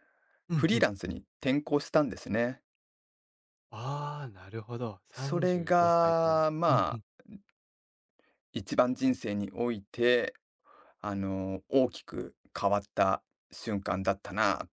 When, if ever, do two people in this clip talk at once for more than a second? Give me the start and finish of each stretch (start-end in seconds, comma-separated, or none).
5.1-7.0